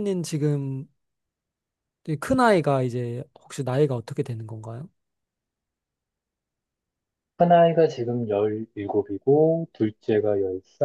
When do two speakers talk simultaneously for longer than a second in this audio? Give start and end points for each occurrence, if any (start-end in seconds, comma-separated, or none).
none